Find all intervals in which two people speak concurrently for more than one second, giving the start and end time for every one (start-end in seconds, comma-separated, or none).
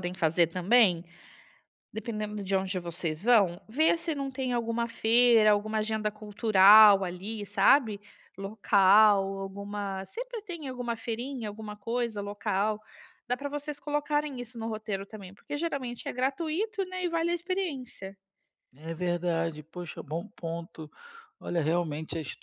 none